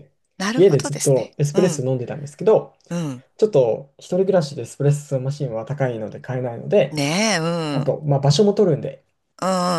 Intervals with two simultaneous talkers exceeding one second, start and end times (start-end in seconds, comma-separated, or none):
0.6-1.9